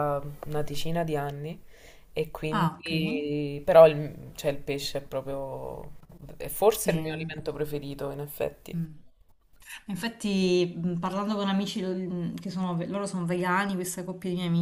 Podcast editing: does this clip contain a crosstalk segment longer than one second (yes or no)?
no